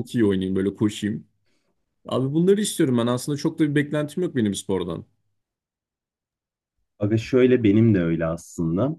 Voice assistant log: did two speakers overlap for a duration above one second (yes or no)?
no